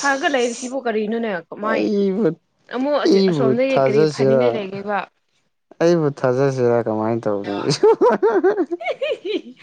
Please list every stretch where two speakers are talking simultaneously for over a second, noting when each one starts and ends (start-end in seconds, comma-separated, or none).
3.0-4.7